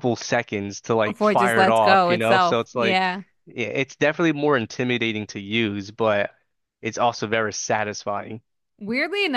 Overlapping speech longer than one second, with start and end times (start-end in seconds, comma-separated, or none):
1.0-3.1